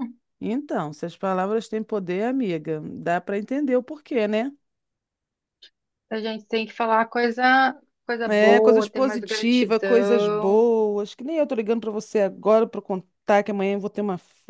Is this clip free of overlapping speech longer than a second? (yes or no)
no